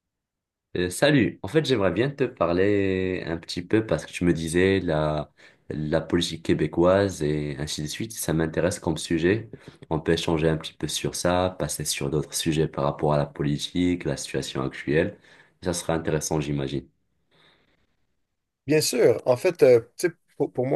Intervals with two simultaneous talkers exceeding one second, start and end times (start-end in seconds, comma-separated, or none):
none